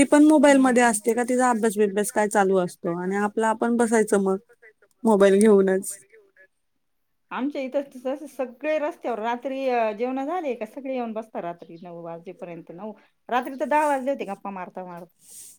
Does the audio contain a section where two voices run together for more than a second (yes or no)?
no